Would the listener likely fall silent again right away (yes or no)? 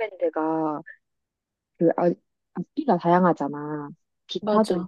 yes